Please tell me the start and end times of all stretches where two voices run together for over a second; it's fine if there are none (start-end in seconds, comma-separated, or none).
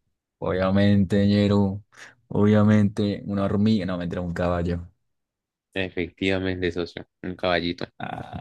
none